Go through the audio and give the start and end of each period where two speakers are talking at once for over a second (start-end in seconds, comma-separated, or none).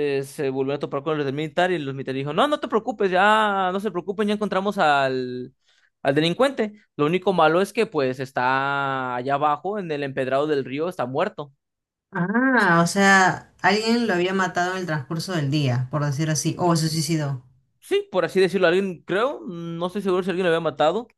none